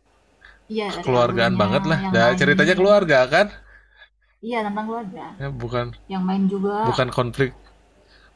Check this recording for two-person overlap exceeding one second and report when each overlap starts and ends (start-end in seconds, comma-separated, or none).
0.9-2.9